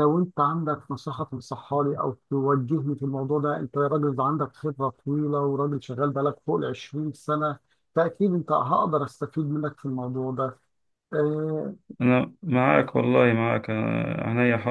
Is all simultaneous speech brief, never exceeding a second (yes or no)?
yes